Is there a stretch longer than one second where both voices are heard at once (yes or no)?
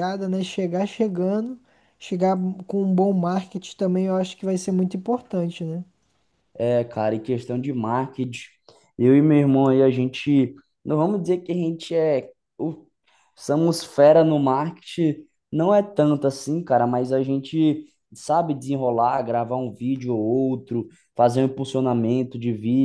no